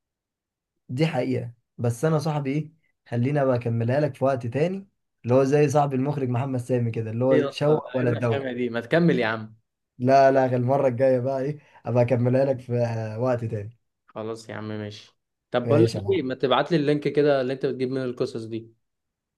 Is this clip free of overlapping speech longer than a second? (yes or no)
no